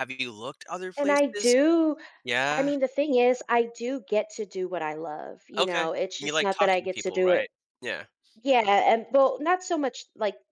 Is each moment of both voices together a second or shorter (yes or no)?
no